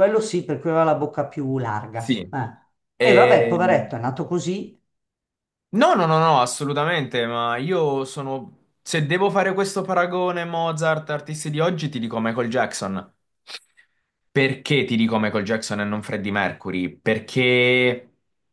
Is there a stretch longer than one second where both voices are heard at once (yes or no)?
no